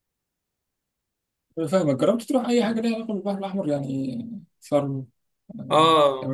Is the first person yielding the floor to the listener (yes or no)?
yes